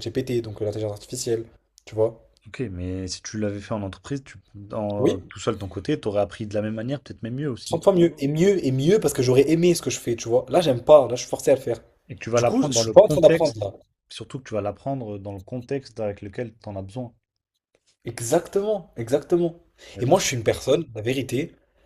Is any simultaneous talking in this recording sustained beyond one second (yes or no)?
yes